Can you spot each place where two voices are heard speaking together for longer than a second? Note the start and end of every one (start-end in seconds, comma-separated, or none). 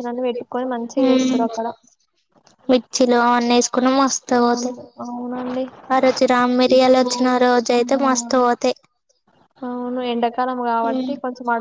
none